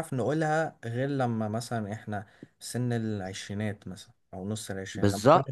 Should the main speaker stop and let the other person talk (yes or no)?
yes